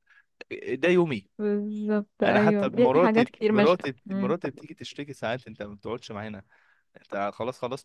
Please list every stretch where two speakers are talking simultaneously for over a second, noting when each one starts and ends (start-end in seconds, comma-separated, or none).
2.2-4.3